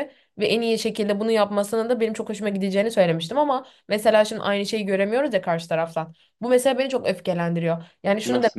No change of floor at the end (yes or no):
yes